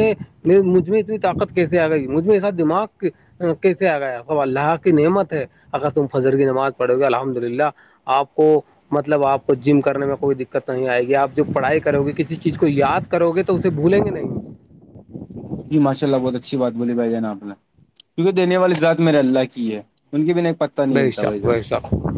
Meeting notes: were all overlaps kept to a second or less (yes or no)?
yes